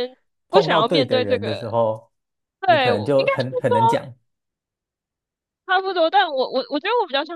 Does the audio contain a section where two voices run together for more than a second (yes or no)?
yes